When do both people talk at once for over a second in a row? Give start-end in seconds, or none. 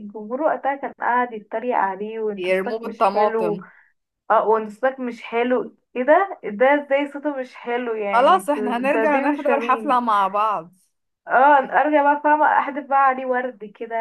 2.4-3.6, 8.1-10.0